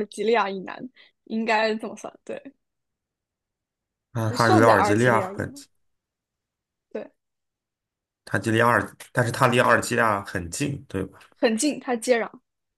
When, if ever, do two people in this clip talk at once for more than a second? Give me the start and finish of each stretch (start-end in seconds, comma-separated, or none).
4.3-5.7